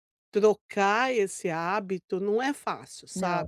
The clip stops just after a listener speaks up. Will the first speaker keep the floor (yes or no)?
no